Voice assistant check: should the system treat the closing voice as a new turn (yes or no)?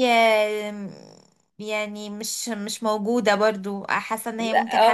yes